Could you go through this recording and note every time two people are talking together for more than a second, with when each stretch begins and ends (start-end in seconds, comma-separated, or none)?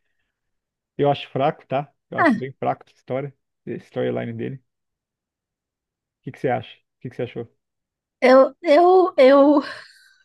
none